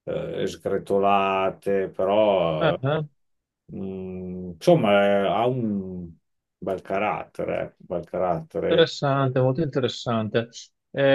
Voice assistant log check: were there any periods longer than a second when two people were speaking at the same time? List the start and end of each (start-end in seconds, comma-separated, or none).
none